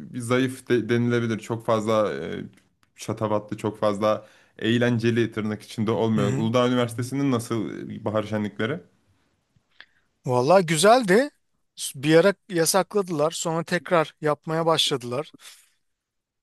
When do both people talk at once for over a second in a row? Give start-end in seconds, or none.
none